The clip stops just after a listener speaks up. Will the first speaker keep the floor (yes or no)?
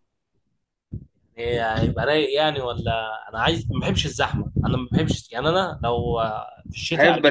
no